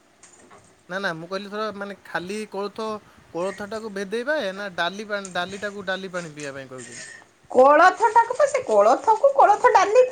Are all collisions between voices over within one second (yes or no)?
yes